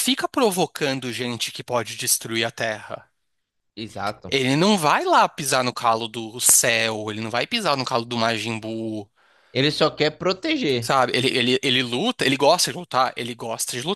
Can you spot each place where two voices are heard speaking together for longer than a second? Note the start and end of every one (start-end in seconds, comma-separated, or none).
none